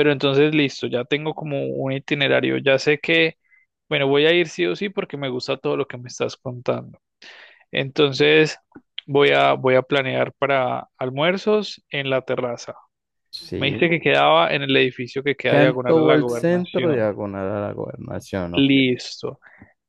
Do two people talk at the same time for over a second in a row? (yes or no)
yes